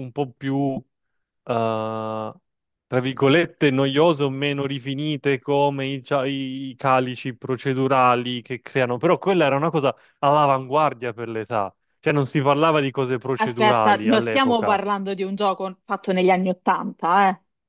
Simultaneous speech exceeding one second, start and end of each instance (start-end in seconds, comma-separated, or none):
13.4-14.8